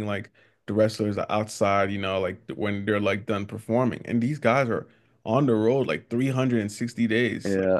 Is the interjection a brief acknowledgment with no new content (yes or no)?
yes